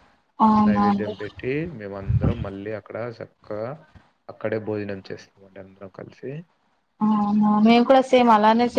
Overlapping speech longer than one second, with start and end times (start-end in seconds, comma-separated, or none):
none